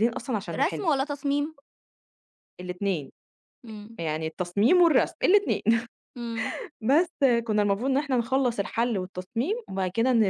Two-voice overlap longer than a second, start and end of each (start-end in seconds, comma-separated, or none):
none